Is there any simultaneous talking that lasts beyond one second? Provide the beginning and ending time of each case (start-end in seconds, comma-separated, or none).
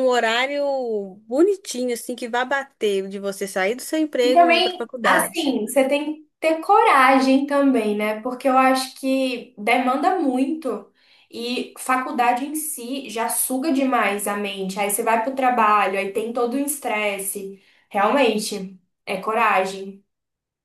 4.2-5.5